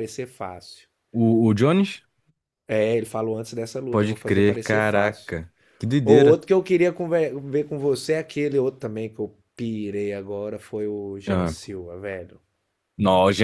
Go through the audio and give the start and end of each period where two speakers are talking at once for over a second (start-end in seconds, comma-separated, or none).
3.9-5.3